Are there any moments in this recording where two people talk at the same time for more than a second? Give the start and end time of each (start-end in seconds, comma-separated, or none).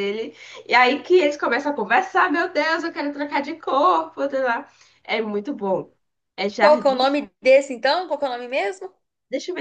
none